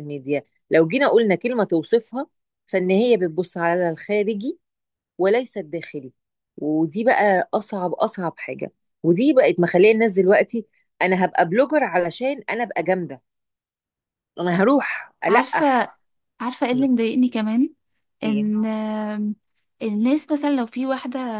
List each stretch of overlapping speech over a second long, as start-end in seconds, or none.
none